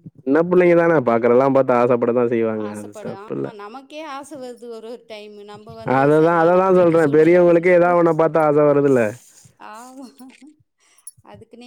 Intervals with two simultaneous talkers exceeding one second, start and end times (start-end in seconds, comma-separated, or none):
6.0-7.9